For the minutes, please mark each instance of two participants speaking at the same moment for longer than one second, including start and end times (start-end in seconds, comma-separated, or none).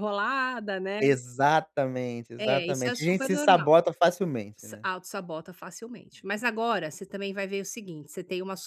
2.4-3.7